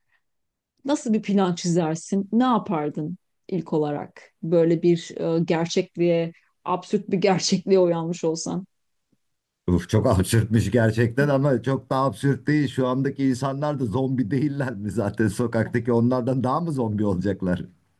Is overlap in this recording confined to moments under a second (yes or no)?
yes